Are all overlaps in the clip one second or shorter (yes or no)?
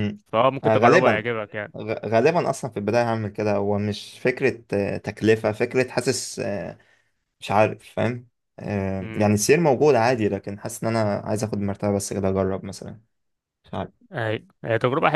yes